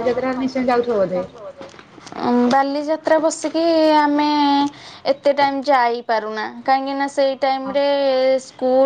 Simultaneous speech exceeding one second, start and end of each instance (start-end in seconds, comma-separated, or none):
none